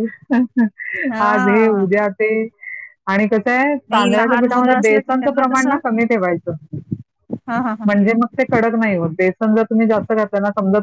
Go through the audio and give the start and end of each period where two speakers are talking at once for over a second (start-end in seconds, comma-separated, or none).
3.9-5.8